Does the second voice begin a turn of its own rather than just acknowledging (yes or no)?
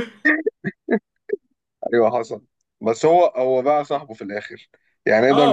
yes